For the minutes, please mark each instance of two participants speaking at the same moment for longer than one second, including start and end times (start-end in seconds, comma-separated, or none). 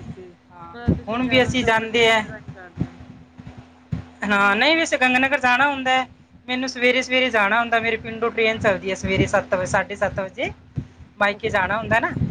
0.8-2.2